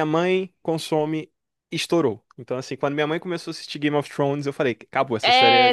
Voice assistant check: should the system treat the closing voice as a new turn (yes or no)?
yes